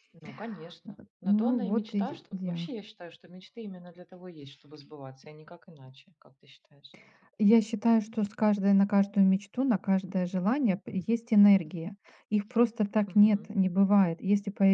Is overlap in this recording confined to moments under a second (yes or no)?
no